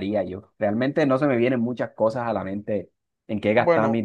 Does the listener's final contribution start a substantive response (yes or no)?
no